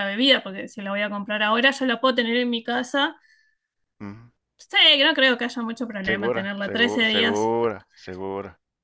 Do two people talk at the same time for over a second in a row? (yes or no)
yes